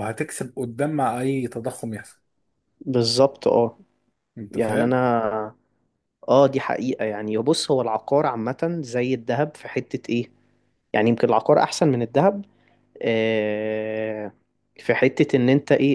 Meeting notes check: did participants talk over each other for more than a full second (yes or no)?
no